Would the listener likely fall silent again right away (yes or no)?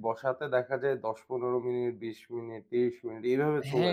no